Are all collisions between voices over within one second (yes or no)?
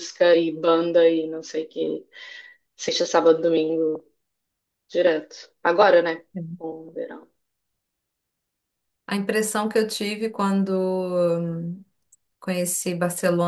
yes